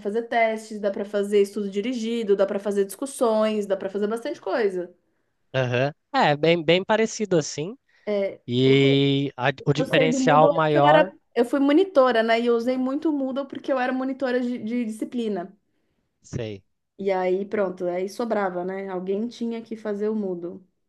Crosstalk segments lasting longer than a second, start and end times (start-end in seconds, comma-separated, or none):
9.8-11.1